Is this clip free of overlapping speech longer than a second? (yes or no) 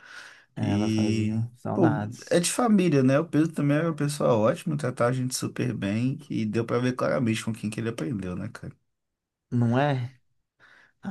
no